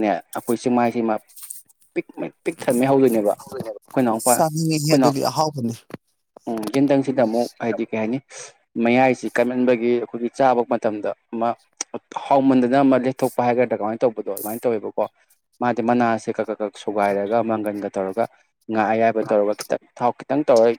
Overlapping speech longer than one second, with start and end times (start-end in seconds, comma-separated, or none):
3.6-5.1